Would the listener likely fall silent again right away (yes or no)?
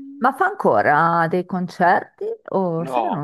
no